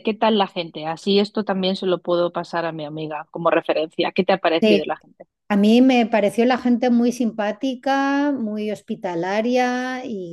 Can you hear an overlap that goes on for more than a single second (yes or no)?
no